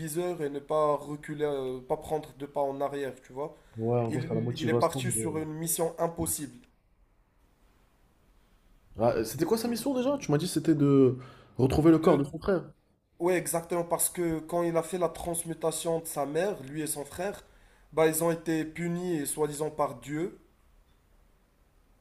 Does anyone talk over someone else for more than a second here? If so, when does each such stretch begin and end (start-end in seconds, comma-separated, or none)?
4.1-5.5